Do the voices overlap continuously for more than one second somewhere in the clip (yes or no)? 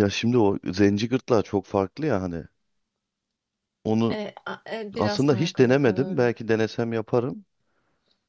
yes